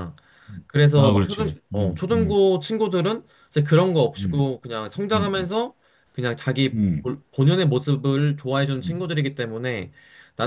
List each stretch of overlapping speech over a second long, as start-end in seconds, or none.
0.7-2.4